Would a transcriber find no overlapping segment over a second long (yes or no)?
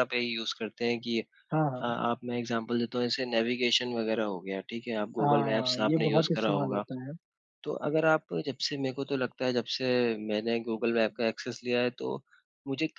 no